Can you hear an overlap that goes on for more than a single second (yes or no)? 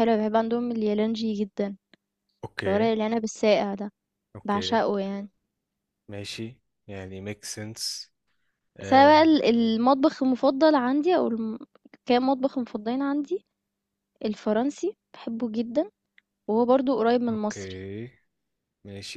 no